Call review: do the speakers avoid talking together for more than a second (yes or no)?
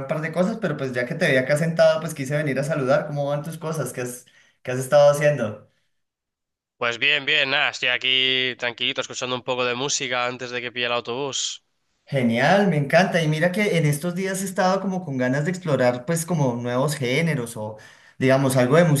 yes